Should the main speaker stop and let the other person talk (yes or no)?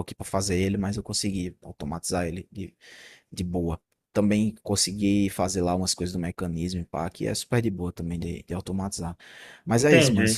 no